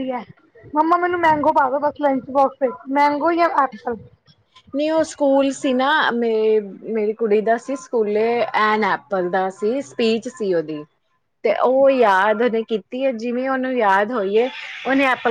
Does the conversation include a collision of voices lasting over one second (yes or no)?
no